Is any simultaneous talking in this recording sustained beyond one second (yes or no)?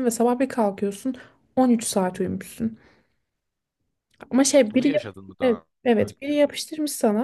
yes